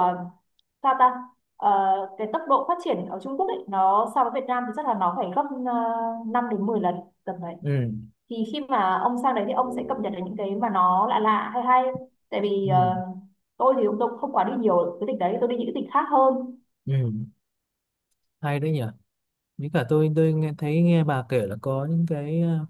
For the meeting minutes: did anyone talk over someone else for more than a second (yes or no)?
no